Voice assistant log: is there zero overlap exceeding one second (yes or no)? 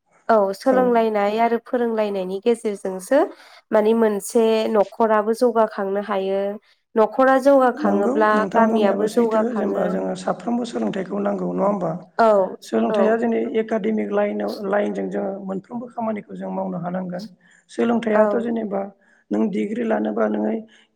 no